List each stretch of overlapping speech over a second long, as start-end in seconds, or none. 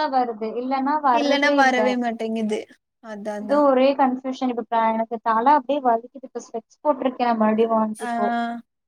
none